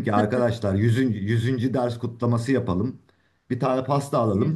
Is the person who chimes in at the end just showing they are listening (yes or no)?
yes